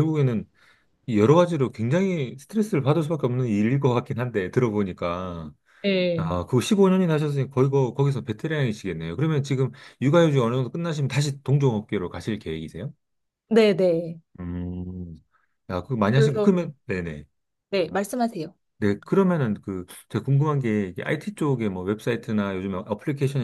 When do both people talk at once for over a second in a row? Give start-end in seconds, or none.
none